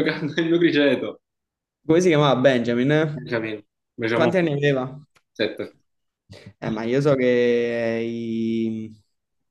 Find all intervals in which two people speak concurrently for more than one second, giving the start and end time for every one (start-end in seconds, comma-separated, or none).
none